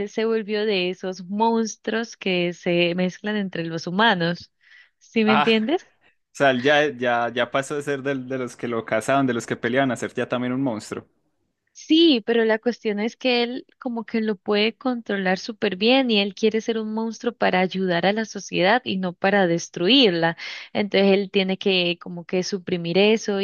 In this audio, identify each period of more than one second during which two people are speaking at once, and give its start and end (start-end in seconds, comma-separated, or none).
none